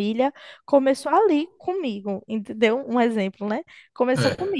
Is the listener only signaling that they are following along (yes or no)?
yes